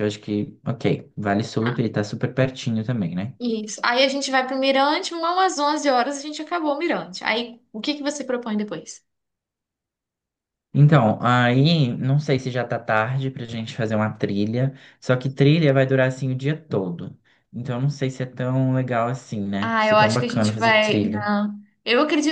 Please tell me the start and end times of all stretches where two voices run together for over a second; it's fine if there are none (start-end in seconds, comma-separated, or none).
19.6-21.3